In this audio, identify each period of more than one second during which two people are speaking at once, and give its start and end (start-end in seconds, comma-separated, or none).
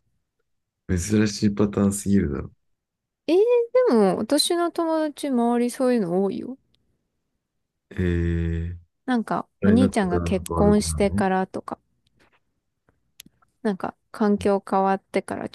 9.6-11.2